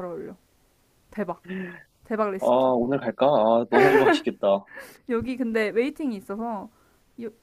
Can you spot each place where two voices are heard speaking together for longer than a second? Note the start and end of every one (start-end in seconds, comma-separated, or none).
none